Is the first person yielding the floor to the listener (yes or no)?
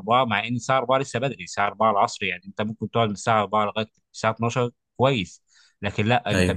no